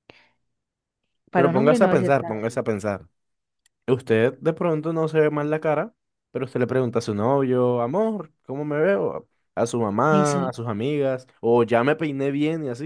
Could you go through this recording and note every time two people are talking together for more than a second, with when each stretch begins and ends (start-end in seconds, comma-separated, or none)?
1.3-2.6